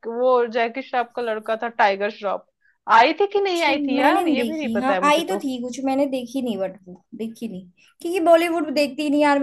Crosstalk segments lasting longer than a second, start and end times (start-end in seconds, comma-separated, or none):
3.4-5.4